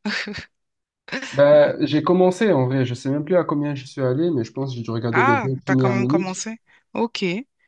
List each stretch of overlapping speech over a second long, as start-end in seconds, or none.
5.1-6.5